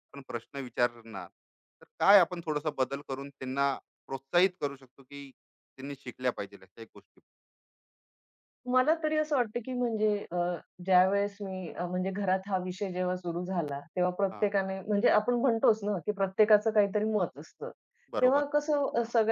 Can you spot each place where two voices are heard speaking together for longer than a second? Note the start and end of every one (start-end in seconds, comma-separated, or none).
none